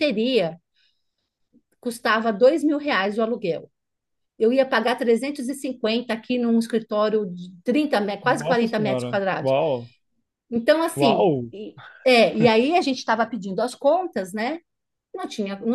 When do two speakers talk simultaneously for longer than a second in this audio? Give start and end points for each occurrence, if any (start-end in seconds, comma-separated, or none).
8.2-9.5